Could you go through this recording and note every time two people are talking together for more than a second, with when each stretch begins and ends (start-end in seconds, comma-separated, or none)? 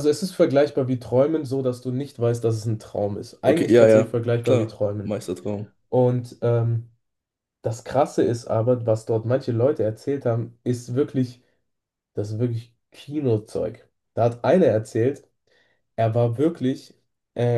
3.4-5.1